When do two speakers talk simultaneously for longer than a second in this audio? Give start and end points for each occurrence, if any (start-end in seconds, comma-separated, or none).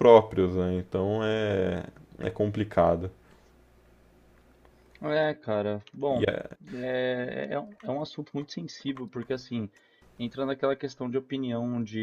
none